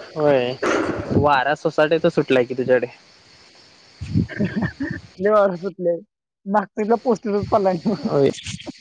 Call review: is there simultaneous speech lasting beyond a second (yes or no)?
no